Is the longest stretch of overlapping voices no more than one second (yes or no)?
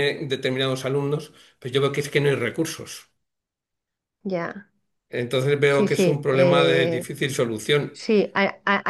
no